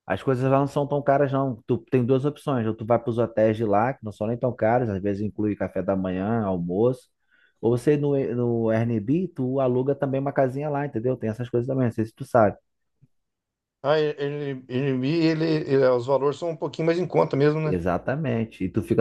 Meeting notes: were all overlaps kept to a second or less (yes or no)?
yes